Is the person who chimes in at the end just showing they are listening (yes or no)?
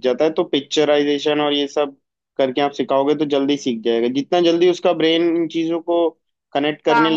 yes